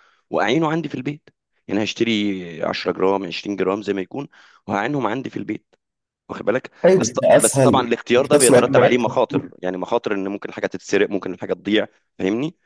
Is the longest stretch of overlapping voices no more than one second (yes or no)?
no